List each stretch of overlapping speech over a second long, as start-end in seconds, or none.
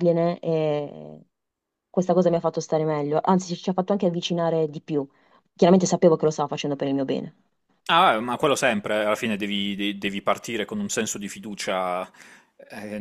none